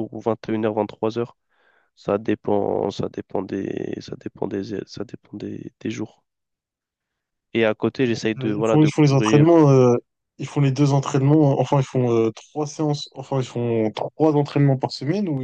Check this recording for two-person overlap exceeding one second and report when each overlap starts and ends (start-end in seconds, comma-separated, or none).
8.0-9.6